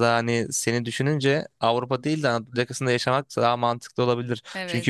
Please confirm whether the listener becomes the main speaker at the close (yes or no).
no